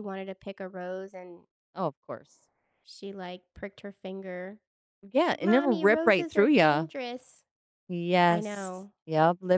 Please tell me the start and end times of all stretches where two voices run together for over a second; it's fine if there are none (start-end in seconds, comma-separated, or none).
5.3-6.9